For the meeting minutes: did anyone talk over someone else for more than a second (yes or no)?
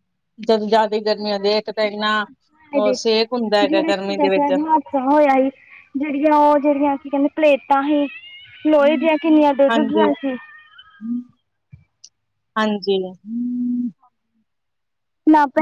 yes